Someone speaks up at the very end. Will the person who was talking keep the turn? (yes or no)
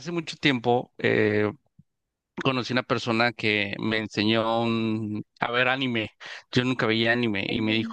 yes